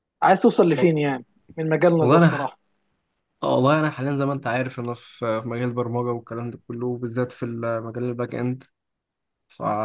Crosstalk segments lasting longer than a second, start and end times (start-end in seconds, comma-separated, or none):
none